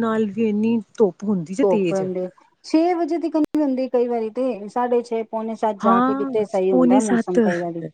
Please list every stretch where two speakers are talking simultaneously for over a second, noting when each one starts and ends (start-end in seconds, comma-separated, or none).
5.8-7.4